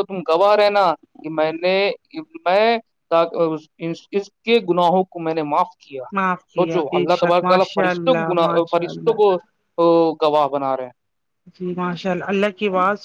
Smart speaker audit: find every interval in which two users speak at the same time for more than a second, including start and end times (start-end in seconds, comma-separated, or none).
6.5-9.2